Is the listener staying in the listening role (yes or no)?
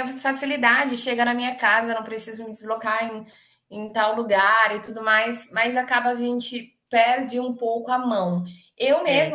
yes